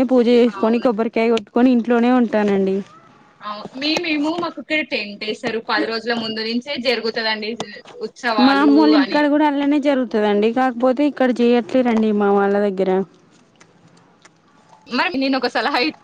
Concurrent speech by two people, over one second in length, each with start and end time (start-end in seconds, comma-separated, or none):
none